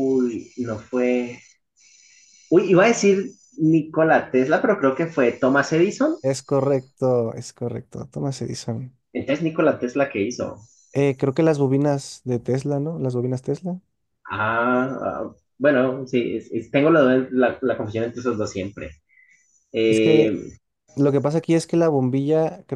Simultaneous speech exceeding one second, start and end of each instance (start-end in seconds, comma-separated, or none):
none